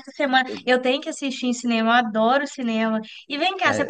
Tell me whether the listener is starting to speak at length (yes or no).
no